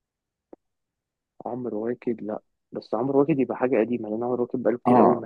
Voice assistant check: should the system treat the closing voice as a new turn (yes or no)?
yes